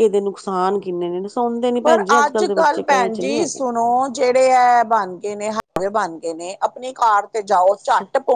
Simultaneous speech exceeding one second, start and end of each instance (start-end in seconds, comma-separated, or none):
1.8-3.6